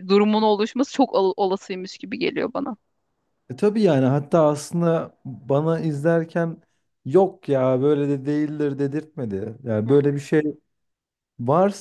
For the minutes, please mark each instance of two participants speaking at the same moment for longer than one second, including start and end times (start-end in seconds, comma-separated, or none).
none